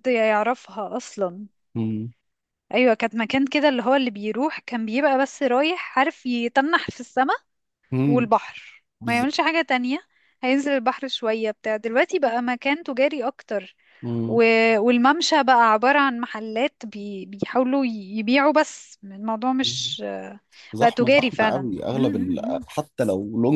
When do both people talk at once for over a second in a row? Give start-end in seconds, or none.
20.8-22.6